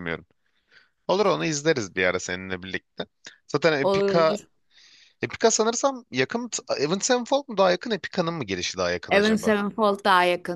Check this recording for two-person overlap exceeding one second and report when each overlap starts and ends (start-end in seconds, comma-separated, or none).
none